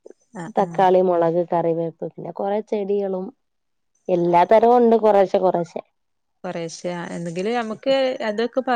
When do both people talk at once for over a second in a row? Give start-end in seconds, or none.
none